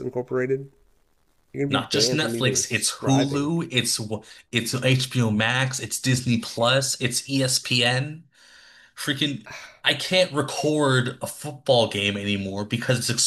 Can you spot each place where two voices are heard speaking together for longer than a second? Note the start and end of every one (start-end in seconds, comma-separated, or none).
1.7-3.5